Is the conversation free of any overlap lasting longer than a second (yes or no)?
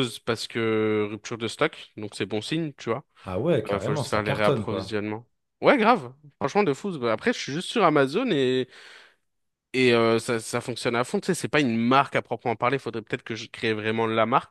no